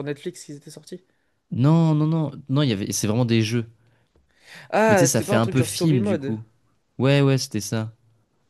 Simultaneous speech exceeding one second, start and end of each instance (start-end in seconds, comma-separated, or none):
4.9-6.4